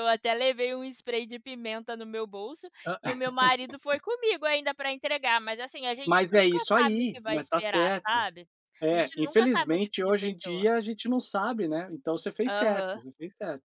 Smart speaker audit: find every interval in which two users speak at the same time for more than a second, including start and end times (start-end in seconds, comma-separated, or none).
6.0-8.2, 8.9-10.7